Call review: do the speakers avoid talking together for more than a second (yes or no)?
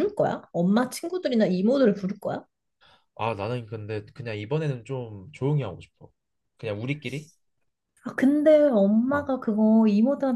yes